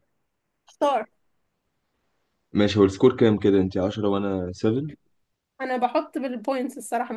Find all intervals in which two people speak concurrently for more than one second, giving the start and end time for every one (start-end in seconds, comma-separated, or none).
none